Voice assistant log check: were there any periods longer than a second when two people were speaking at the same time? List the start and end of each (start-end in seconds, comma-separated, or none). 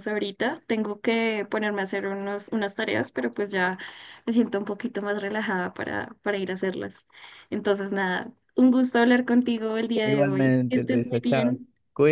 10.0-11.6